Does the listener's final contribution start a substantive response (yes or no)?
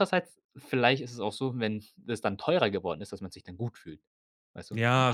yes